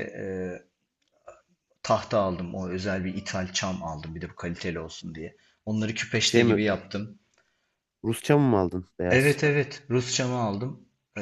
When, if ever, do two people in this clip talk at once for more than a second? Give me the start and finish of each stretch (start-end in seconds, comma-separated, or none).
none